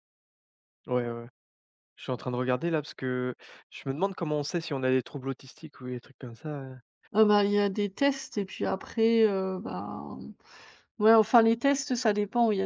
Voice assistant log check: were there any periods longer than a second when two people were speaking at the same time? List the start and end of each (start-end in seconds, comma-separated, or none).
none